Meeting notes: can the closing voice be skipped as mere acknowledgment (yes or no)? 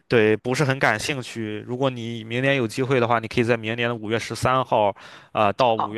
yes